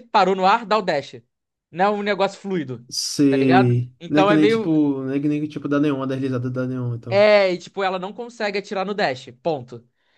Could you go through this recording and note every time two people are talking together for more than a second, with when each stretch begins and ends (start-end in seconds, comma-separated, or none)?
3.3-4.7